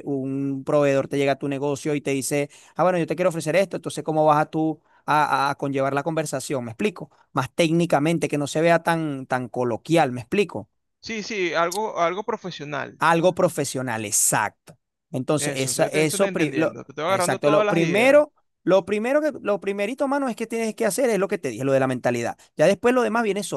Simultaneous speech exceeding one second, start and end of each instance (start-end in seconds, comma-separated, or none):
15.4-18.2